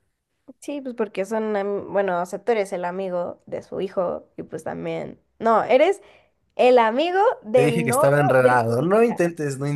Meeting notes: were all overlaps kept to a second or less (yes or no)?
no